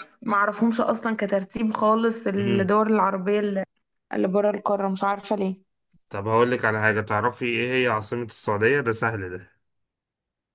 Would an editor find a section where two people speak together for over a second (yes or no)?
no